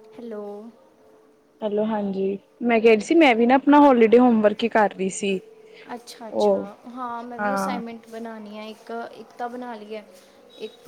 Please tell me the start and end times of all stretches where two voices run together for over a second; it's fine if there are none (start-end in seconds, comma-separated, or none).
none